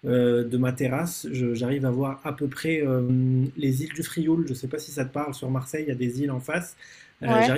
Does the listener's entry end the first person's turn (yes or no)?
no